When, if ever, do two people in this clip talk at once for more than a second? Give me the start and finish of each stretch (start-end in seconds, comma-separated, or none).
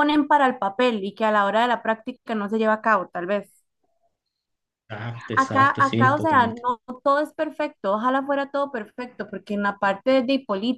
5.4-6.6